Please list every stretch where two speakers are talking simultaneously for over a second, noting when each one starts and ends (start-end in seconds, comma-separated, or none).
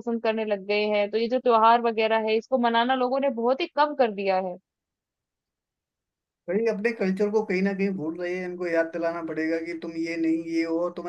none